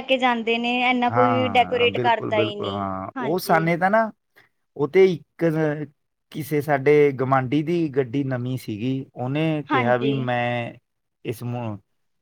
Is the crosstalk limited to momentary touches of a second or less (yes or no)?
no